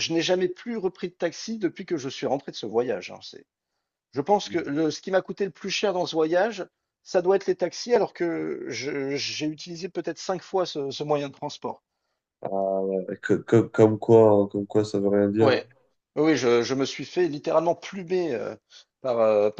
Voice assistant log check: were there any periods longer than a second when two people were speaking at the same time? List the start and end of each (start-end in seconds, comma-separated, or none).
none